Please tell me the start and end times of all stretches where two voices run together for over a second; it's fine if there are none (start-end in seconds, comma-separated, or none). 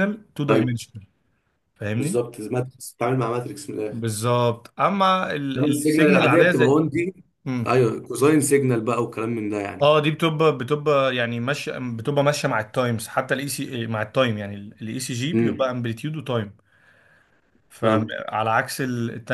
5.6-6.8